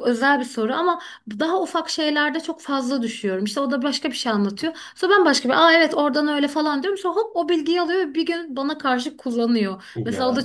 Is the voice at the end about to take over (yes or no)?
no